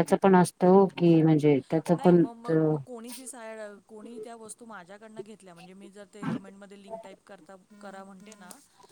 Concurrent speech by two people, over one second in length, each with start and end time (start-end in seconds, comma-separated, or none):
none